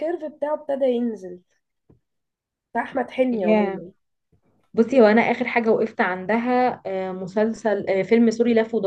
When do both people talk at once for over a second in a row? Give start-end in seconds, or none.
none